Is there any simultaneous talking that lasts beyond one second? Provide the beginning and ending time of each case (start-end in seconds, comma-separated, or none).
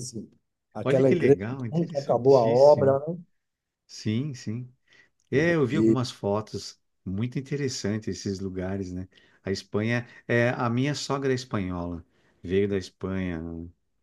0.8-3.0